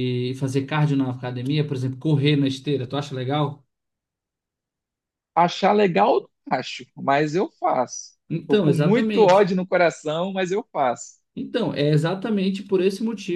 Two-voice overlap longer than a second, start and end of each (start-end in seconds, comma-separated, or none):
8.3-9.5